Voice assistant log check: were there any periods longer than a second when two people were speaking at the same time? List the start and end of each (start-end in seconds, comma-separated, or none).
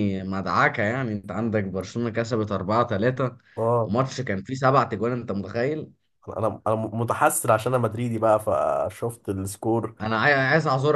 none